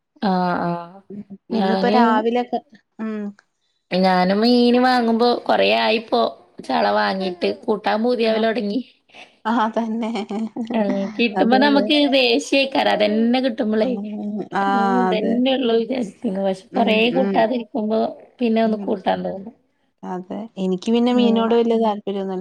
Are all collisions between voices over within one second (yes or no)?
yes